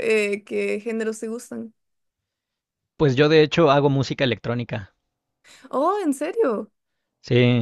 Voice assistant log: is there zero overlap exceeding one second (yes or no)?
yes